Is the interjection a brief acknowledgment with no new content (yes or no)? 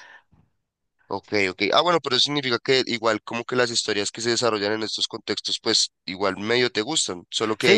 no